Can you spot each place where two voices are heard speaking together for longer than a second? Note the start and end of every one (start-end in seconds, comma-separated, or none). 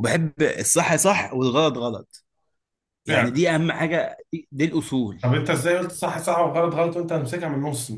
none